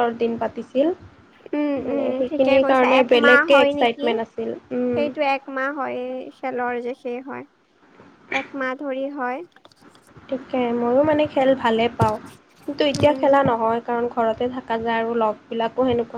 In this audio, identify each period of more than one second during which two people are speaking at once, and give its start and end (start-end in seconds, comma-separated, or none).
1.9-4.0